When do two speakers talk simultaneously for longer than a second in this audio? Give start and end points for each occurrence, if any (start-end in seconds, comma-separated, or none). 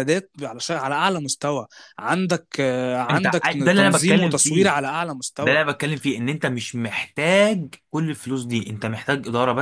3.1-4.7